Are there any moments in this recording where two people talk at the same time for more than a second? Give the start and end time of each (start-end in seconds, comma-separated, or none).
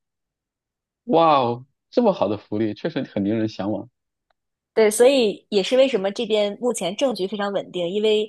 none